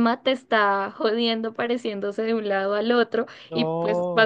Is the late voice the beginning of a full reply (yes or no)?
no